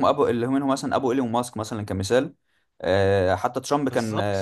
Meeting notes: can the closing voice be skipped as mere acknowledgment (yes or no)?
yes